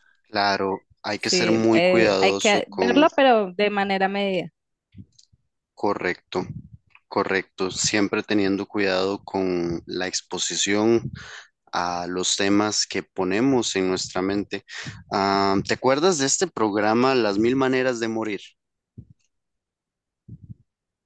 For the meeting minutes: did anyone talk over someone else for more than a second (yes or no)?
yes